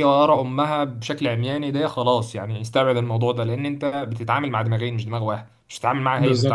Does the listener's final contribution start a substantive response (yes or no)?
yes